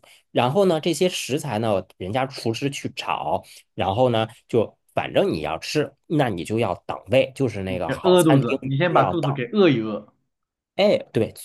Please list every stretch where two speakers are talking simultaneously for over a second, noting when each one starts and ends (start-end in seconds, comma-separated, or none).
7.7-9.3